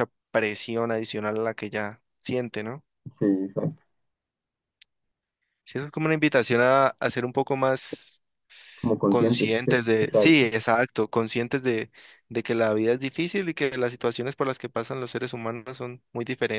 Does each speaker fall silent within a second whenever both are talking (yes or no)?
no